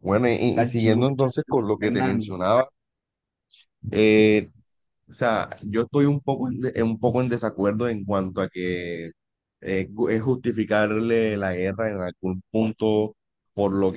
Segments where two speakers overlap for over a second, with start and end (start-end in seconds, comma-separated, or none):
0.6-2.3